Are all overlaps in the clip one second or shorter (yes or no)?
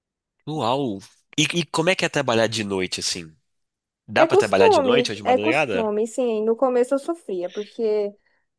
no